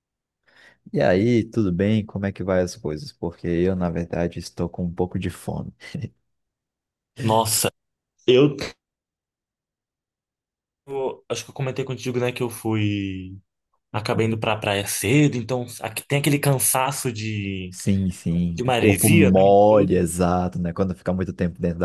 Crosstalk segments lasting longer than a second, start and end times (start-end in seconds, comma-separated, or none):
18.6-20.0